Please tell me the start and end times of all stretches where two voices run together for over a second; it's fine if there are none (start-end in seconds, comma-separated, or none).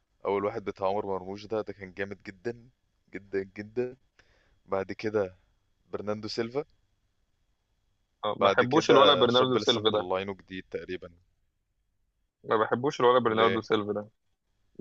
8.4-10.1